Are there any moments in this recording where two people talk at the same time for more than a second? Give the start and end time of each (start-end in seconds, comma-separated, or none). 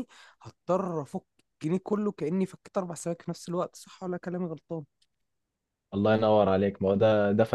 none